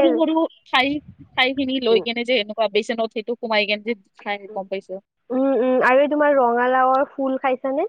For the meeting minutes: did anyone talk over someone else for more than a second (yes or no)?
no